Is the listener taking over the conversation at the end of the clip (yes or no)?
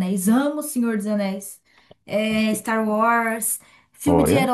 no